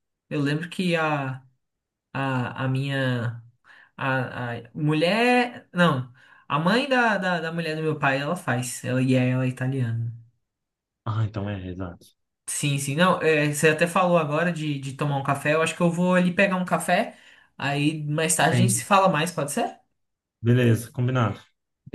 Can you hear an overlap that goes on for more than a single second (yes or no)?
no